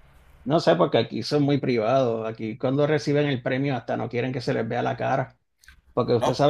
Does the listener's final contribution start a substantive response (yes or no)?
no